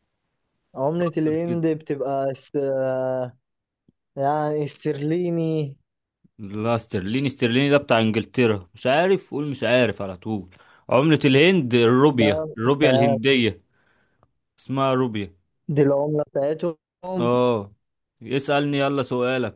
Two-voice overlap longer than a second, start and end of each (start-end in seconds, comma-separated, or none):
none